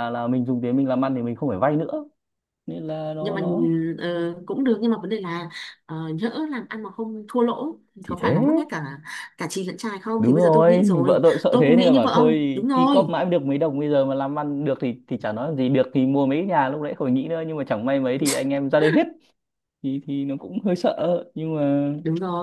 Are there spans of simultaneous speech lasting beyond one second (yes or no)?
yes